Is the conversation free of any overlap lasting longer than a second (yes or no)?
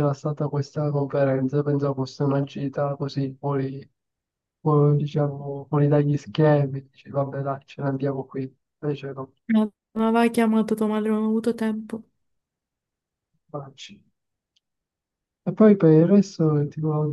yes